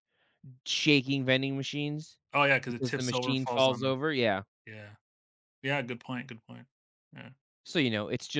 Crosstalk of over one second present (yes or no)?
yes